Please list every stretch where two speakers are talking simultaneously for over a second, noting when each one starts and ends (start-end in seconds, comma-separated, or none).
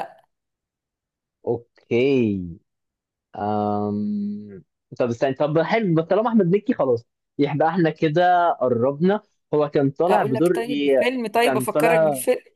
10.1-11.9